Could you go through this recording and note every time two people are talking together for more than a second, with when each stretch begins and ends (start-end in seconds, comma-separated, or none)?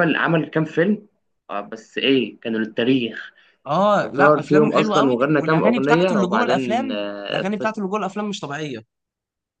4.2-7.8